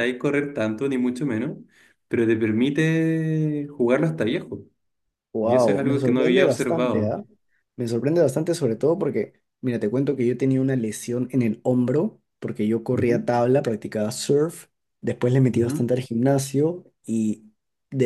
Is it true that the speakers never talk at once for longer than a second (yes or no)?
no